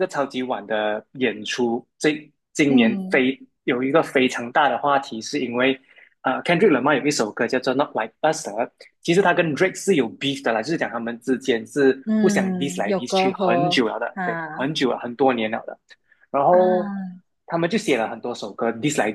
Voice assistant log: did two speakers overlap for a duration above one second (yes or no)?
yes